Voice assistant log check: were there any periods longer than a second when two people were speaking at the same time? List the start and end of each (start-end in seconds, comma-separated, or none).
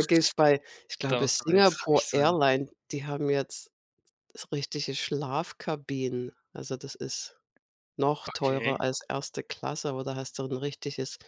1.1-2.4